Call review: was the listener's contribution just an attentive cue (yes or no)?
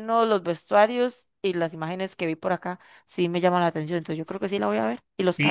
no